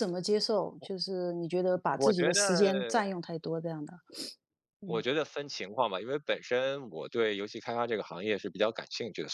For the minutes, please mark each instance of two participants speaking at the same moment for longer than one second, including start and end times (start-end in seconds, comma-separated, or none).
none